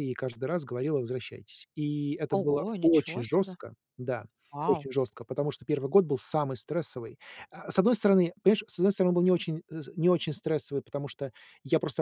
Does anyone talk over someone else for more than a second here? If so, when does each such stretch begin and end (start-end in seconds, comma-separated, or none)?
2.3-3.6